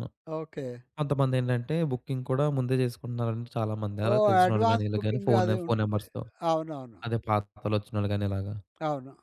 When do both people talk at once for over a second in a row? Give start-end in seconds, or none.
4.1-6.0